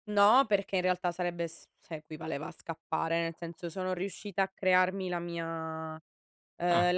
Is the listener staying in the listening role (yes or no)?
yes